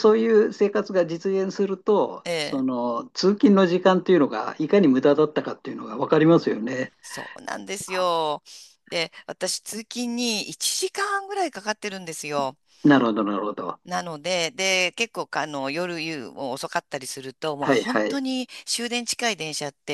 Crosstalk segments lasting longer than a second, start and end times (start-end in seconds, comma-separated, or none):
none